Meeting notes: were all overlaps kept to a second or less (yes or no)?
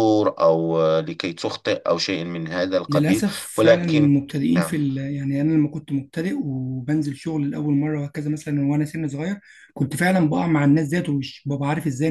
no